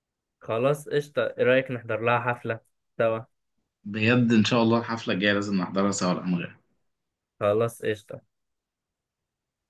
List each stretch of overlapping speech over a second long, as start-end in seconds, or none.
none